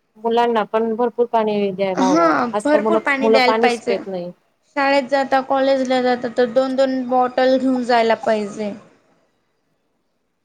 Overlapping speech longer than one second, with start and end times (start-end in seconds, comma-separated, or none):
2.0-3.9